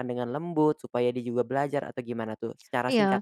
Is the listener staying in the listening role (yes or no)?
no